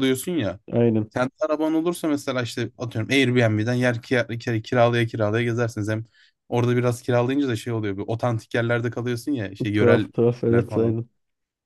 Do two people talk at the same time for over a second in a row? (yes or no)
yes